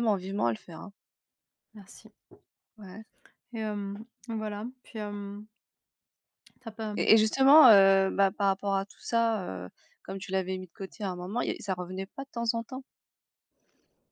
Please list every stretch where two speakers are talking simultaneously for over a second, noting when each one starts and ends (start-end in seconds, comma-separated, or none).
none